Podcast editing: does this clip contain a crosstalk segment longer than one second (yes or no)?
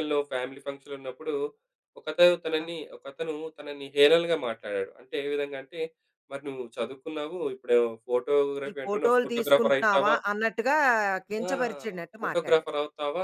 yes